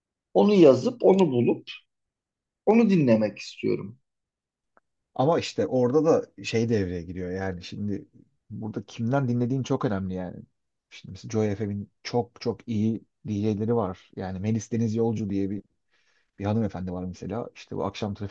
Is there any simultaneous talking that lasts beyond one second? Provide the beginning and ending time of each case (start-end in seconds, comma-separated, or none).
none